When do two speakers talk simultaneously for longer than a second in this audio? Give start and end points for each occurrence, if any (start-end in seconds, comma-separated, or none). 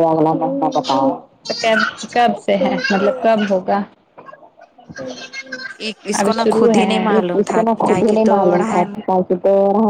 6.2-8.8